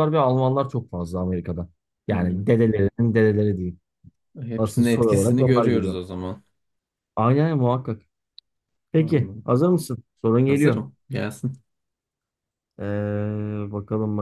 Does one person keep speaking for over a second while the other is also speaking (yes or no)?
yes